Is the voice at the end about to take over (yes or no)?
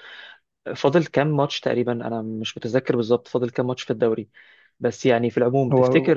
no